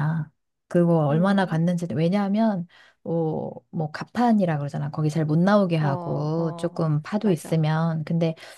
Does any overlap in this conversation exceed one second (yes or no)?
yes